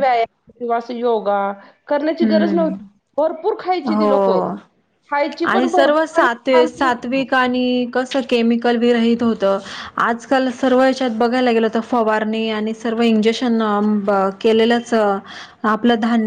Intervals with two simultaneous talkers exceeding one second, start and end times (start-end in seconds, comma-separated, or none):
5.5-6.9